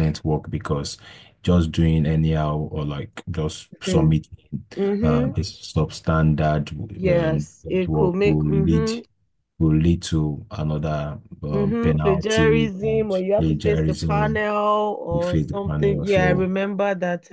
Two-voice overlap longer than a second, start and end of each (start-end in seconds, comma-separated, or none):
7.1-8.9, 11.5-14.4, 15.1-16.5